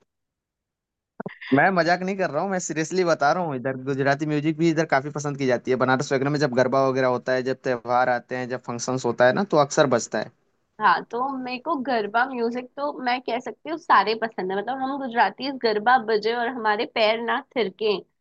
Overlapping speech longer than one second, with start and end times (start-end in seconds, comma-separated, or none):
none